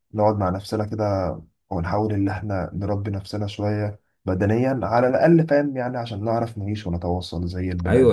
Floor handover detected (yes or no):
yes